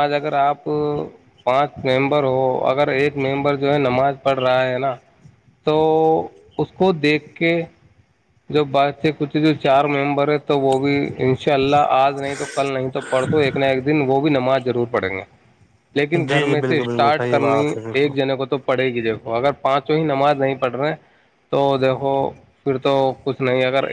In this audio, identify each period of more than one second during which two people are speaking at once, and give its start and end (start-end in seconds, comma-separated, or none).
16.1-18.1